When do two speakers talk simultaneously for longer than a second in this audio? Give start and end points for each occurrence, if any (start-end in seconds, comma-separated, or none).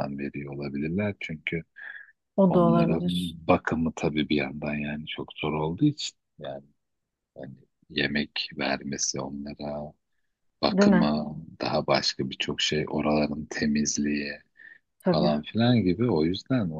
none